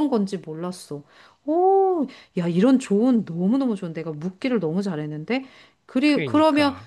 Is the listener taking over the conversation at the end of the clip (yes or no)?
no